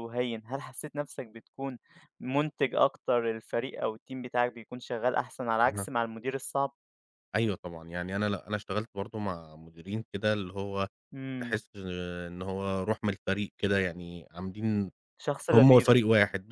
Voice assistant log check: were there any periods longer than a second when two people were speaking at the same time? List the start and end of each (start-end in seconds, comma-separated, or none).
none